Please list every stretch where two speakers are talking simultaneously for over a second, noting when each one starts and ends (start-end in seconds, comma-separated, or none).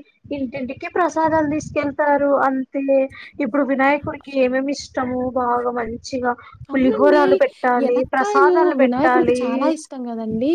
7.9-9.4